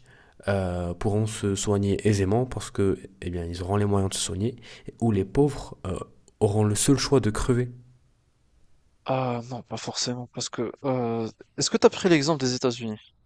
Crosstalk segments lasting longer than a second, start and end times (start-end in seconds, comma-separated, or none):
none